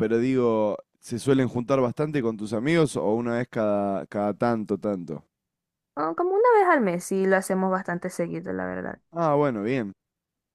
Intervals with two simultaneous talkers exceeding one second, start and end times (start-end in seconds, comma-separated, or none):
none